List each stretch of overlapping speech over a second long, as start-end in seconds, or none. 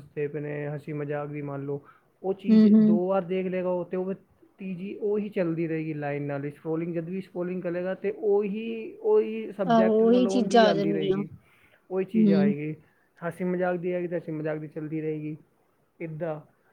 9.7-11.2